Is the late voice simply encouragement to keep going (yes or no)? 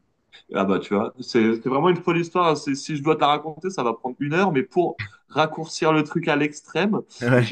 yes